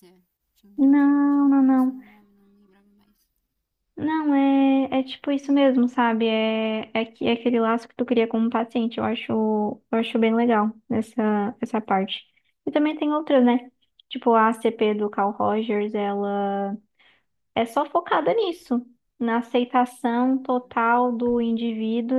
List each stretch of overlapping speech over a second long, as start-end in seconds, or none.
0.8-2.0